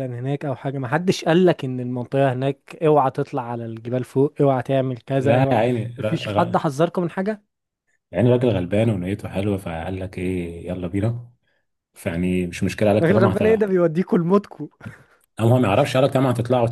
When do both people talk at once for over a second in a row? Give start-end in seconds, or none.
none